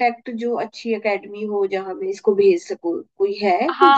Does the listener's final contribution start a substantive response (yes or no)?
yes